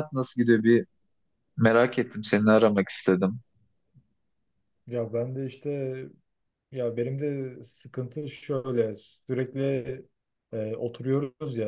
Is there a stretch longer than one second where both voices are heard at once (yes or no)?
no